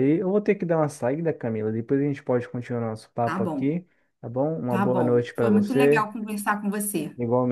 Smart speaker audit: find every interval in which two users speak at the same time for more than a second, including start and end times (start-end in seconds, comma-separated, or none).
4.7-6.1